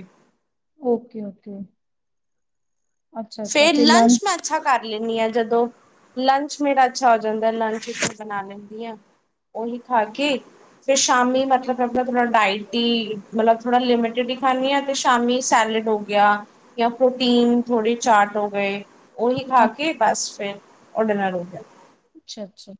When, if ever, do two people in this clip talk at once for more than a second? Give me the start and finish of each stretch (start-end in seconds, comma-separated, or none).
none